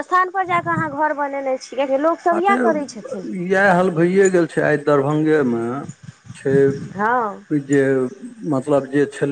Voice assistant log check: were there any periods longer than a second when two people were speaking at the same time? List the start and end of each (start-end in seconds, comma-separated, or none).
none